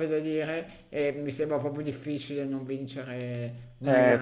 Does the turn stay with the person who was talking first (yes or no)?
no